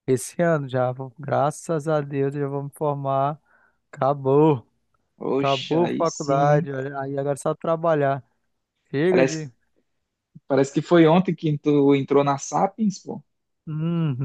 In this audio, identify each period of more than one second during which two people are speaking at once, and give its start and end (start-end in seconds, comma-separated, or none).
5.4-6.7